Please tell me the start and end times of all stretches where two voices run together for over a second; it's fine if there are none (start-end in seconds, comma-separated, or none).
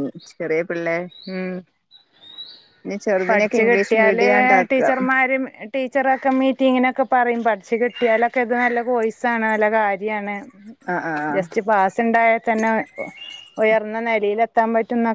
3.2-4.8